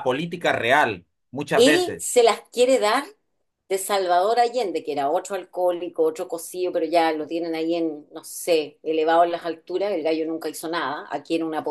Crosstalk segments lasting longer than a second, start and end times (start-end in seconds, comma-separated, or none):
none